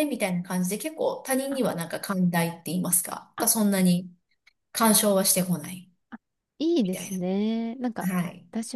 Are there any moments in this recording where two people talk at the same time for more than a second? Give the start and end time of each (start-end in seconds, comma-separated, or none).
none